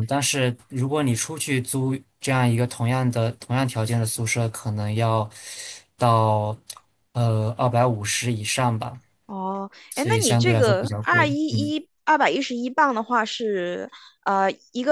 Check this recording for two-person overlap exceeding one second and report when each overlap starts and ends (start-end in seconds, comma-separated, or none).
9.9-11.7